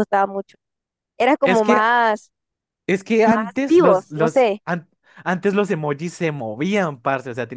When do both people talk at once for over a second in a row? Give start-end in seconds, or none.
3.2-4.6